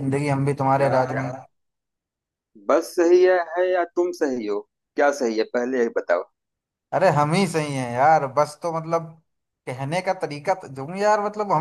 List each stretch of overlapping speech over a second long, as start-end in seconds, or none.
none